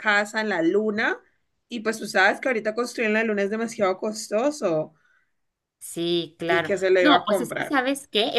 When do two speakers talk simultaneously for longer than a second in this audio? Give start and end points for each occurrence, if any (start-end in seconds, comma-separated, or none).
6.5-7.8